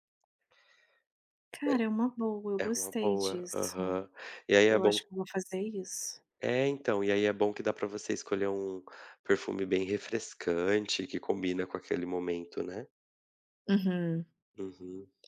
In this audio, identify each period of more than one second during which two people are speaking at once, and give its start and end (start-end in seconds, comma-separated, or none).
2.6-4.0